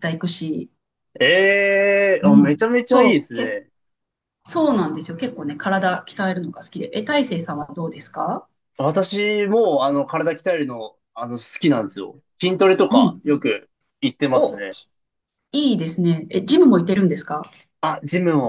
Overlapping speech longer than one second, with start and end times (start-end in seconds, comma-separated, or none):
2.2-3.6